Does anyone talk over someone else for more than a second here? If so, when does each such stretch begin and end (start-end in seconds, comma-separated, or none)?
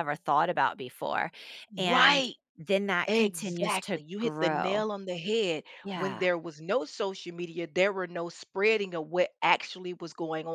3.0-4.8